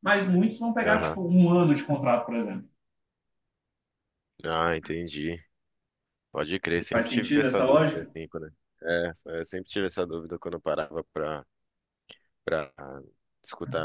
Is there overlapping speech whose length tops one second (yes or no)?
yes